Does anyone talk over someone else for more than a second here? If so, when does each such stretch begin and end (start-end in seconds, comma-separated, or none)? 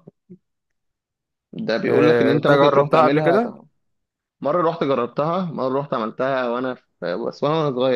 1.9-3.4